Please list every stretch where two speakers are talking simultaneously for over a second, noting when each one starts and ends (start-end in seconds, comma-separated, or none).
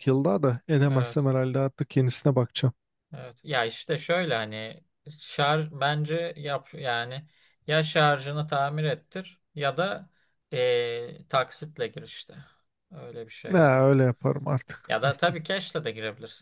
none